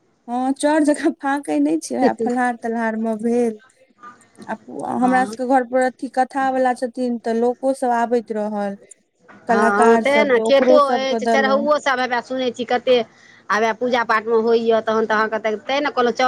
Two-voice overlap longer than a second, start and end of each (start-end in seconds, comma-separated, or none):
9.5-11.7